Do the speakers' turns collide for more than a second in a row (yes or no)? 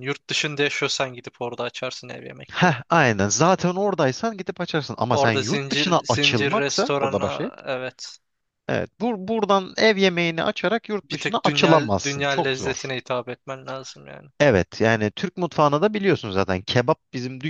yes